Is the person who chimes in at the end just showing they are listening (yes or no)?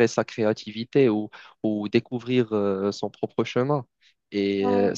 yes